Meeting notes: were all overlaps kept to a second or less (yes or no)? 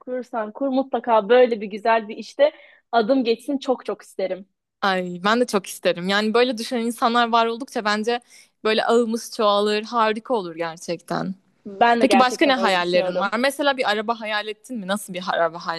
no